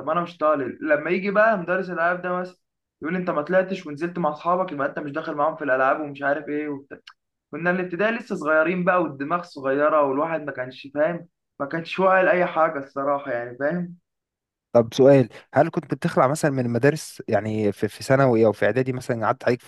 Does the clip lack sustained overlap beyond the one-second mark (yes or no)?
yes